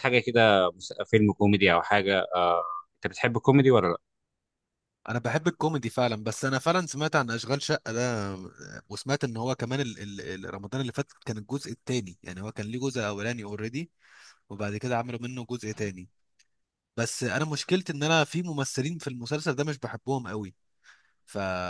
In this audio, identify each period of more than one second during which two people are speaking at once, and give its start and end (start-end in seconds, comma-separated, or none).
none